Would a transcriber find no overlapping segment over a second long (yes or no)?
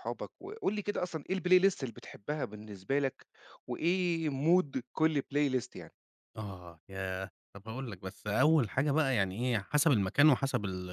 yes